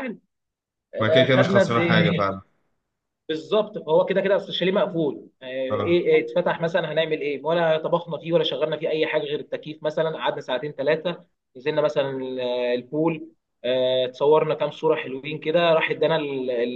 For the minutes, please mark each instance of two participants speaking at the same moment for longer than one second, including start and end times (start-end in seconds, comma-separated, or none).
1.0-2.3